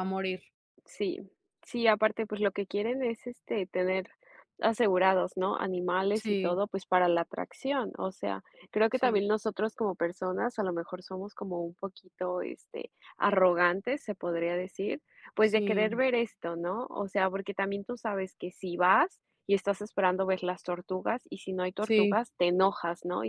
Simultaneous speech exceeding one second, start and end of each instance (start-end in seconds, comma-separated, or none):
none